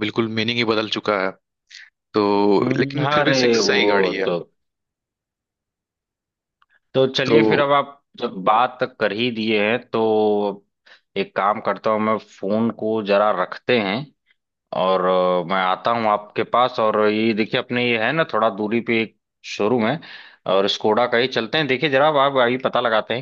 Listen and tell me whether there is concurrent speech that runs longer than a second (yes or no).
yes